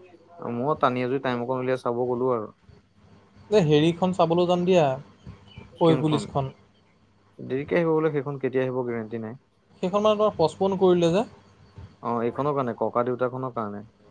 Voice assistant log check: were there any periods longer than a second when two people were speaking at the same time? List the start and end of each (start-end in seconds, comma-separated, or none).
none